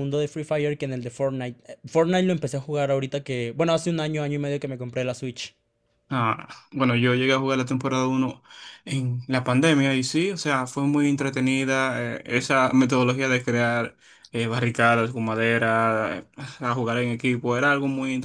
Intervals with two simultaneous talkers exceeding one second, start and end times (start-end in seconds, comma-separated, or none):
none